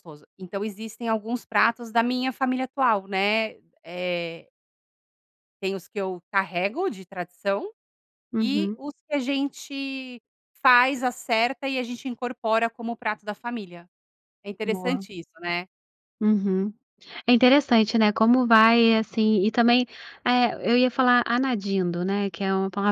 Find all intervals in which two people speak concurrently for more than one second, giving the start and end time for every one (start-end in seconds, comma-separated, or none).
none